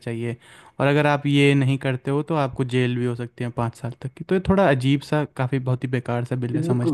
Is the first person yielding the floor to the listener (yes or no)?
yes